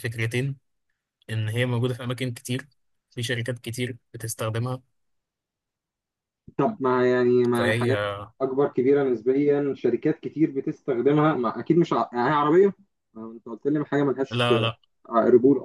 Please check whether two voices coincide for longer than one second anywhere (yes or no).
no